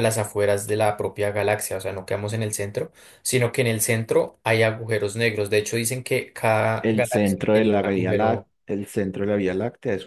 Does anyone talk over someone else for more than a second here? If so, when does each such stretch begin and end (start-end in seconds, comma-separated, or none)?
6.8-8.5